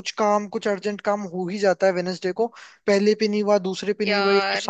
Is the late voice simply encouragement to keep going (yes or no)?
yes